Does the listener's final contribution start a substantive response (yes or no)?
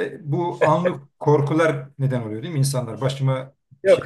yes